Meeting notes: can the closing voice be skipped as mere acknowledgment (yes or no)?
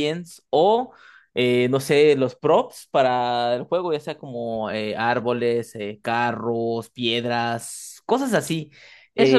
no